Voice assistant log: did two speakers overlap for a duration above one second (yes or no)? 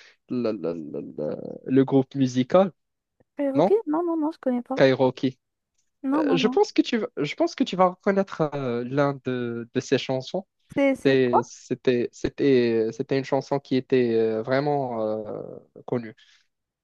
no